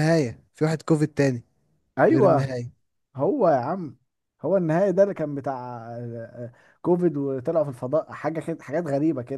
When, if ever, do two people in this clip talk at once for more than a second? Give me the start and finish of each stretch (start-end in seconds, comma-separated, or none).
none